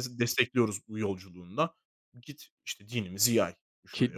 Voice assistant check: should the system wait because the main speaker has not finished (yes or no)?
no